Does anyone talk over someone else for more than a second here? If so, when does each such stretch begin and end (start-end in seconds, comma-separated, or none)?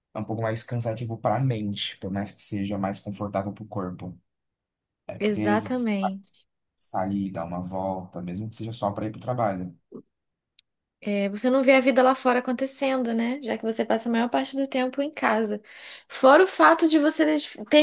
none